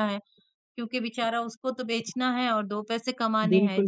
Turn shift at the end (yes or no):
yes